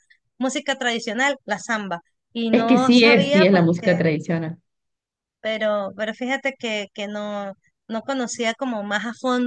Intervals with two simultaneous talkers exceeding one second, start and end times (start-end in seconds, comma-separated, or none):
2.5-4.0